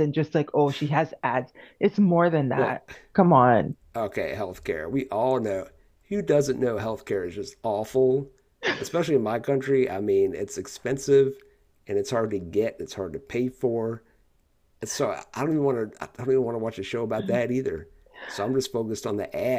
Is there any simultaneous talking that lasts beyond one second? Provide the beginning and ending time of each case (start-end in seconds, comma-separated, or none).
none